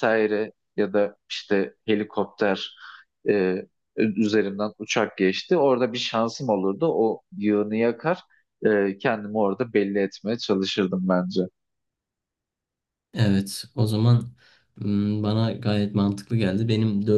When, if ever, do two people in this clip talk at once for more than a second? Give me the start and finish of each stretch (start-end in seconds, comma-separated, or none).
none